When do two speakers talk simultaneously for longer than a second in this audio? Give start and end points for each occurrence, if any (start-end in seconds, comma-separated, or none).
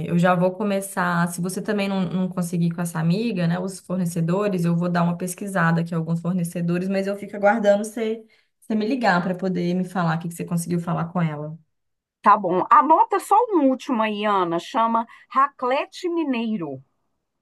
none